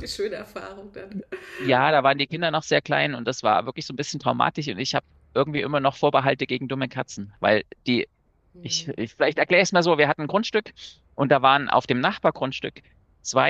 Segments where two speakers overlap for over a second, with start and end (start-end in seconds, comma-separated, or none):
none